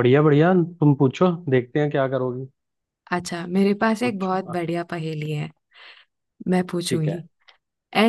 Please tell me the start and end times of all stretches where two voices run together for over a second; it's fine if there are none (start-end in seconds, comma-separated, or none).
none